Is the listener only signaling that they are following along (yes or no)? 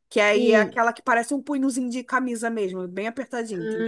no